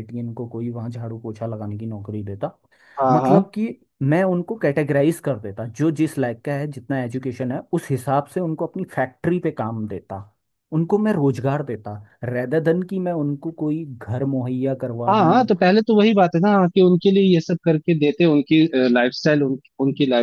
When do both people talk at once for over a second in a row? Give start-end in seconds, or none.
none